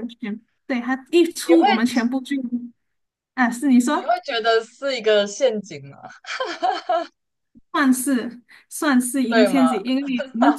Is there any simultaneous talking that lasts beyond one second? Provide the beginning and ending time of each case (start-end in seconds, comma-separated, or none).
none